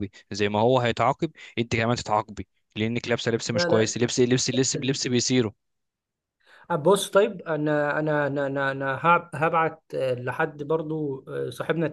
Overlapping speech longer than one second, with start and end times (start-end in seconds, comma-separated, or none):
none